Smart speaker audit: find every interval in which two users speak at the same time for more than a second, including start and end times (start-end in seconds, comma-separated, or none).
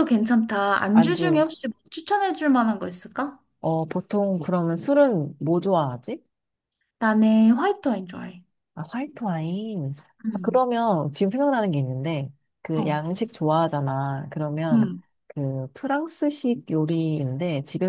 none